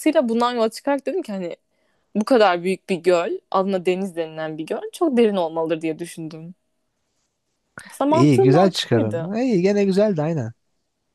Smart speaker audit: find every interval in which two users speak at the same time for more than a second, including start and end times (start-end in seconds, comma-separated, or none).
8.1-9.3